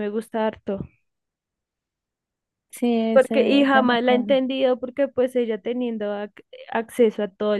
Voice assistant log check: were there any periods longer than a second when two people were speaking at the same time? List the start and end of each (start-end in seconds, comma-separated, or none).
3.1-4.4